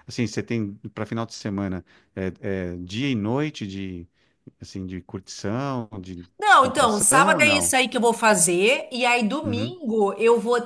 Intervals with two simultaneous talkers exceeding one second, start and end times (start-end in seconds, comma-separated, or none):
6.4-7.7